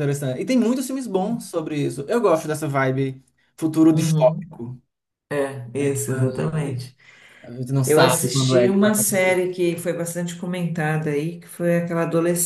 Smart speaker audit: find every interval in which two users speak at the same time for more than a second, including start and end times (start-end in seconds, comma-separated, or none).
7.8-9.4